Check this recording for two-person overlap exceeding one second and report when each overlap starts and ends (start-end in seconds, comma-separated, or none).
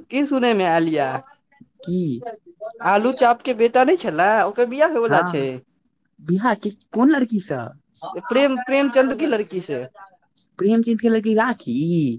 none